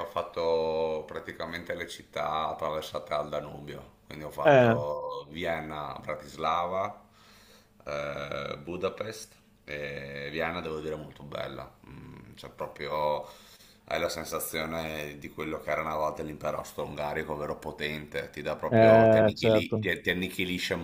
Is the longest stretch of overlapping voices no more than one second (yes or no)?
no